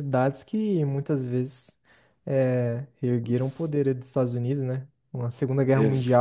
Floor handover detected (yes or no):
no